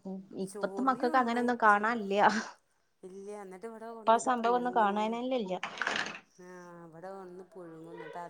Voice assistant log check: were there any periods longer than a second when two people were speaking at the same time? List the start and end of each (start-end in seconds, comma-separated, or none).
0.5-1.8